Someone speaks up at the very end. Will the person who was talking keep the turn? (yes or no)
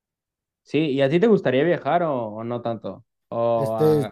no